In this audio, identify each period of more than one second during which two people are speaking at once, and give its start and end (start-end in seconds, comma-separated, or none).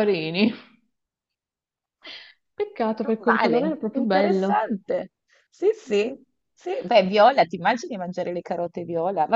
3.2-4.6